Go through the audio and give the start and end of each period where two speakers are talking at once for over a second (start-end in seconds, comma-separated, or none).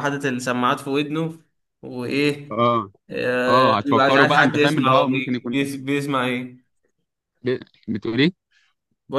3.5-5.7